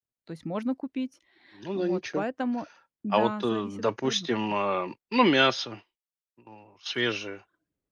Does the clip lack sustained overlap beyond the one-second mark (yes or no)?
no